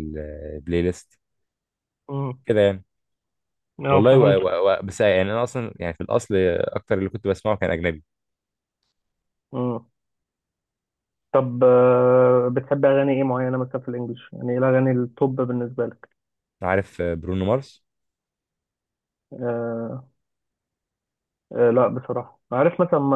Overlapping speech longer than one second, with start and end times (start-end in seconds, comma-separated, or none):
none